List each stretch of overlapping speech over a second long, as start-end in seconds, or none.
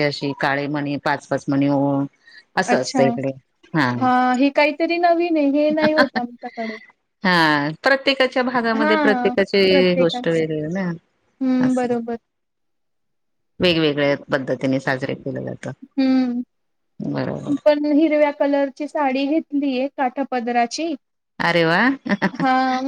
8.8-10.4